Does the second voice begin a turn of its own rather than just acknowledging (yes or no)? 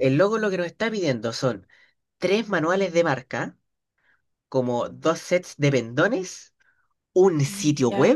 no